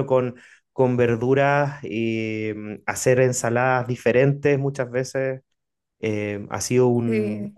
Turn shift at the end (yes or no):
no